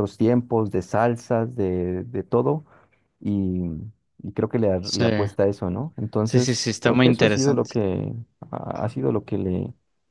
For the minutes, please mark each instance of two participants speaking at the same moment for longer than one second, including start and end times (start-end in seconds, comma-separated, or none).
6.2-7.7